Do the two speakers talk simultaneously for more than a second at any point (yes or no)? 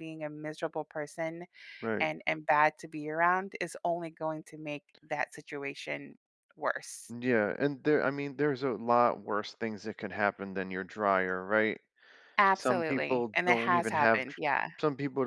yes